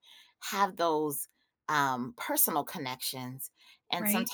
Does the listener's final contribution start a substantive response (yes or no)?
no